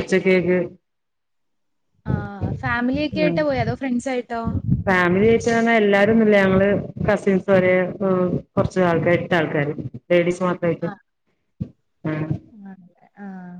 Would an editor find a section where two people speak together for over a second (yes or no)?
no